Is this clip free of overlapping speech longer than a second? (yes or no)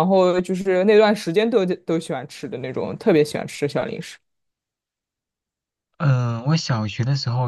yes